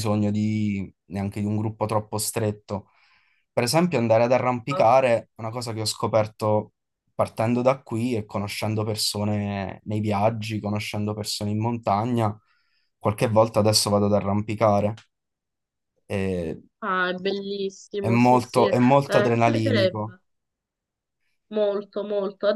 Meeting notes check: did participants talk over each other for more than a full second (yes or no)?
yes